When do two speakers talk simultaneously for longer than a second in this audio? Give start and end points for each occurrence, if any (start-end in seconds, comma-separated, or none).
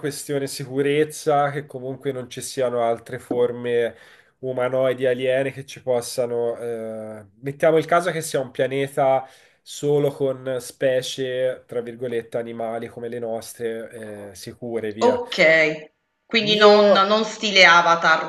none